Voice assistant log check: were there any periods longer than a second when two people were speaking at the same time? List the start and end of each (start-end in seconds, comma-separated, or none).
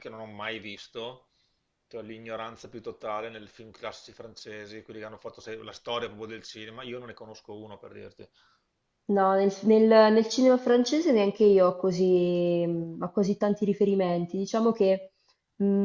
none